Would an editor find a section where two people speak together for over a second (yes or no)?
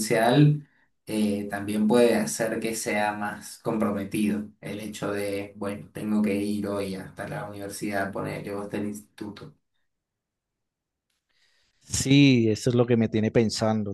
no